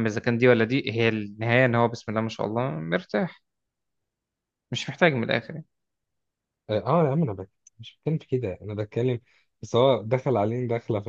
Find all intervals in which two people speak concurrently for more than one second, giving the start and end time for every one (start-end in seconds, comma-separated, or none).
none